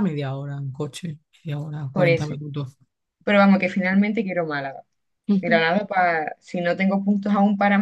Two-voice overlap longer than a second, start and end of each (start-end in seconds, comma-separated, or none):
none